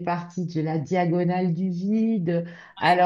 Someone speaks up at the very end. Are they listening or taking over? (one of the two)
listening